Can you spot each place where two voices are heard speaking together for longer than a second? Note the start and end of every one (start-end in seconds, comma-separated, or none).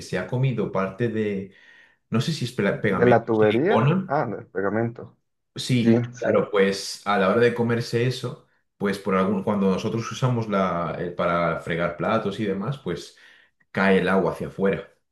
2.7-4.2